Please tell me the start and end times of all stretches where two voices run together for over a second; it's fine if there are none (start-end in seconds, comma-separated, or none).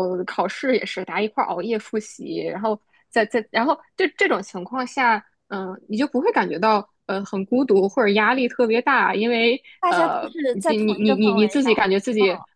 9.8-11.9